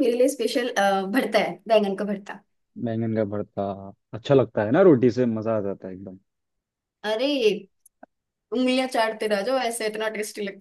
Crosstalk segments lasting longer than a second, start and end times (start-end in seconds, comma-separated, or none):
none